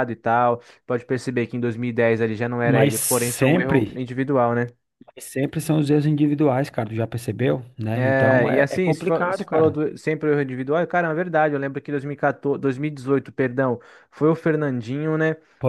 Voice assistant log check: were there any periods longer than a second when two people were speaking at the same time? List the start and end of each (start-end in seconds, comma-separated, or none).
2.6-4.0, 7.9-9.8